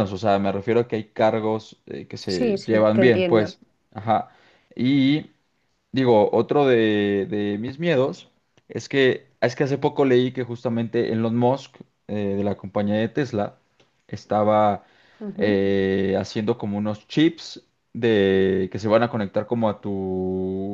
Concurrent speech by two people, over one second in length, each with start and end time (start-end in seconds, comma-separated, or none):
2.3-3.5